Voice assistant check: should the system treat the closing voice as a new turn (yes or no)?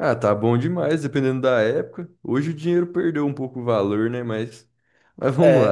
yes